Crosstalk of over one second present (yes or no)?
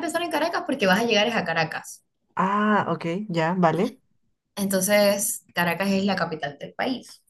no